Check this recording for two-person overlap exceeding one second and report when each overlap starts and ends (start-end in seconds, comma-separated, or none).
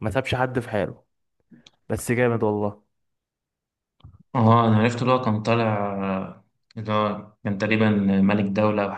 none